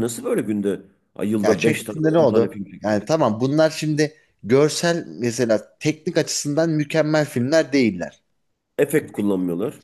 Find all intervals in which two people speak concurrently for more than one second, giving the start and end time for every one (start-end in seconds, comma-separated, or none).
1.4-3.0